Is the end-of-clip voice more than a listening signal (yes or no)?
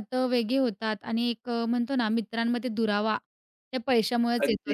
yes